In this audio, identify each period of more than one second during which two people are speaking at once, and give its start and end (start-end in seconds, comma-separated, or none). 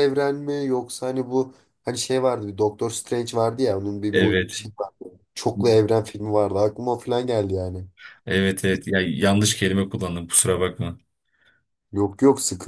none